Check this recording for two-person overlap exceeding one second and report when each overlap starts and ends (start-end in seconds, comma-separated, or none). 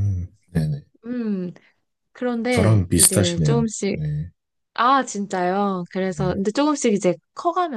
2.5-4.0